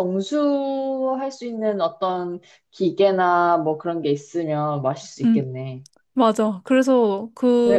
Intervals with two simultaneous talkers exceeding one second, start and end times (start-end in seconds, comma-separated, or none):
none